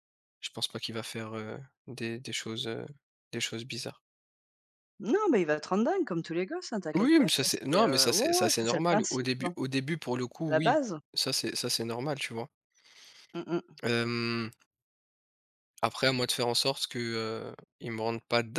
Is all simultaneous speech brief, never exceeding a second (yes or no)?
no